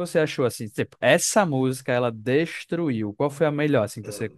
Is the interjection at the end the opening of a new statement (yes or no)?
yes